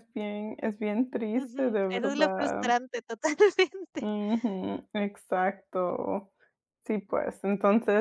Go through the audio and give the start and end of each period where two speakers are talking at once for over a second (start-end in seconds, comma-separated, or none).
1.3-2.7